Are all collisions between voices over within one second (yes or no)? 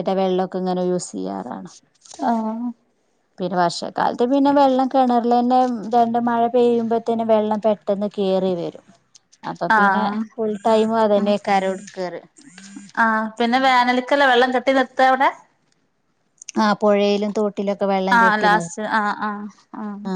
yes